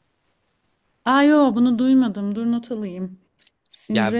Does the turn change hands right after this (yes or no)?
yes